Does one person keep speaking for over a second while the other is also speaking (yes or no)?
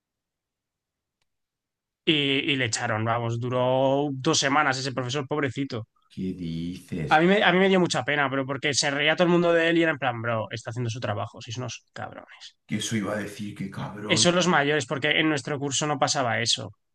no